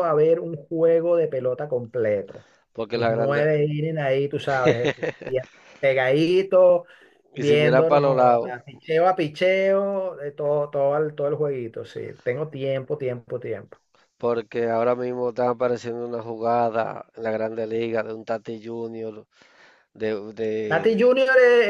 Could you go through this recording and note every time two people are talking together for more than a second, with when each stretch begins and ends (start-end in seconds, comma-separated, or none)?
7.3-8.6